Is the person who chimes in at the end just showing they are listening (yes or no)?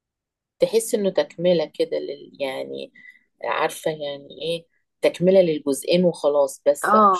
no